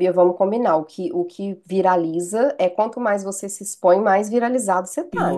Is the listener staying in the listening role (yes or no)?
no